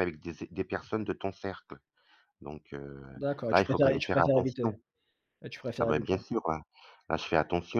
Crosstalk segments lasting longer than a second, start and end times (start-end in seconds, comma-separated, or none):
3.5-4.7